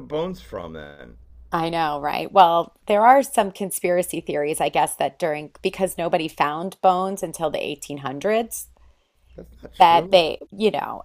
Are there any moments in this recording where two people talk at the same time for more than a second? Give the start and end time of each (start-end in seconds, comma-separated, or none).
none